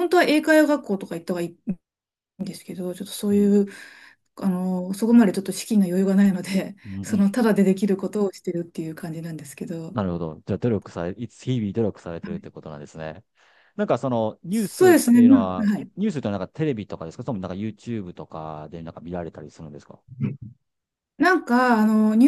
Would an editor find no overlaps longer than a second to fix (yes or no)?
no